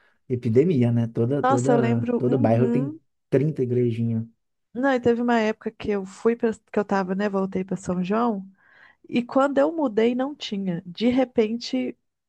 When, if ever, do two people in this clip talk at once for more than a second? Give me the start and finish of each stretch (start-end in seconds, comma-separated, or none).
1.4-3.0